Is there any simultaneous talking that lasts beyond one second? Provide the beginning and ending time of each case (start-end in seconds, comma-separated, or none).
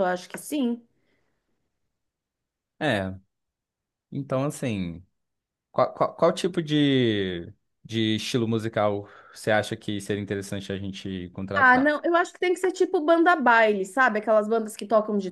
none